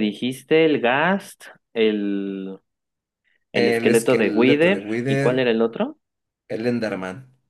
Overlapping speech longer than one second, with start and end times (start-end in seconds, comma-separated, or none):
3.5-5.4